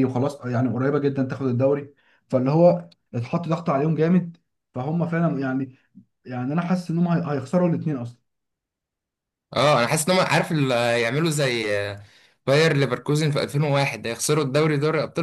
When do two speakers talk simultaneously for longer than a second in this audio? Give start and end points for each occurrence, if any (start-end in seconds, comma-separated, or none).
none